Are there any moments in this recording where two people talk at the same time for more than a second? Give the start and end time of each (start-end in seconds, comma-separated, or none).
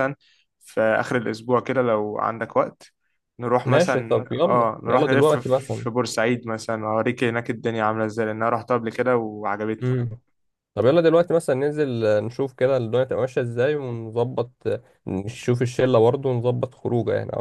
3.6-5.9